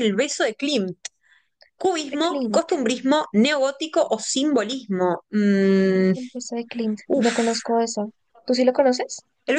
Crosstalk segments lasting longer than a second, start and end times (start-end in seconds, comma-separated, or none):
none